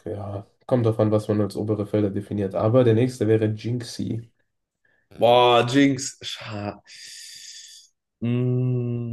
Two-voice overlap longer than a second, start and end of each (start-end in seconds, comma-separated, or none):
none